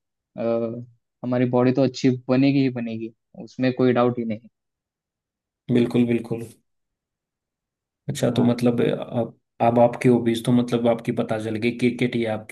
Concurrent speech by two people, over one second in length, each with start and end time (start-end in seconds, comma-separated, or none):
none